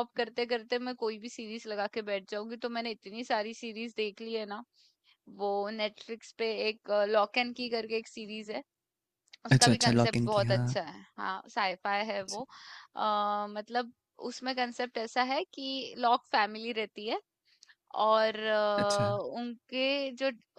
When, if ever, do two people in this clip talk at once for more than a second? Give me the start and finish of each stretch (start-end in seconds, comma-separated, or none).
9.6-10.8